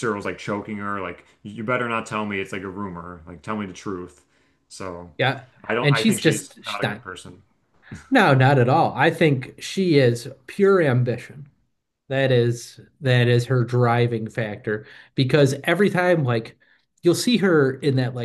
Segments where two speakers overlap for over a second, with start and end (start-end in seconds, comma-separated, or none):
5.8-7.0